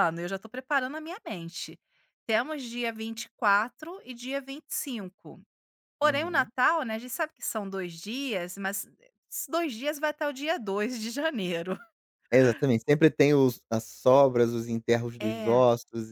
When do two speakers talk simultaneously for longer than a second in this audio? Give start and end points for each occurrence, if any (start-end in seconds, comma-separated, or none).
none